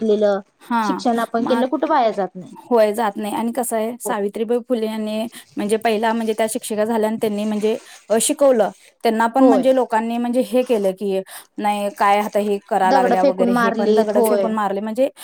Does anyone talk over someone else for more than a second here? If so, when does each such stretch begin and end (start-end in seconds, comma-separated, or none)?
12.9-14.5